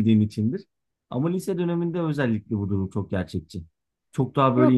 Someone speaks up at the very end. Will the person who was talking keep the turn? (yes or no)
no